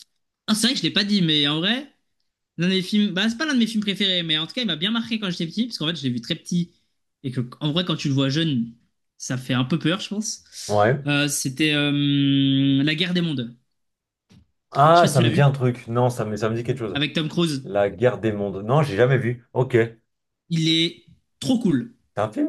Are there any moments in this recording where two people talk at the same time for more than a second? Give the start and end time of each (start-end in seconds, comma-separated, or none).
none